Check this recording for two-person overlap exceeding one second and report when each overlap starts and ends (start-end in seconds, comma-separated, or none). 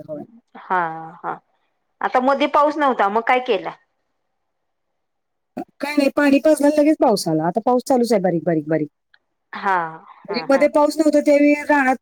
none